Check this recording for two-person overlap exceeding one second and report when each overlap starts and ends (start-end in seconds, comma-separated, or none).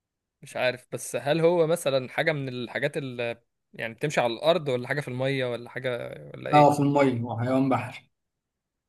none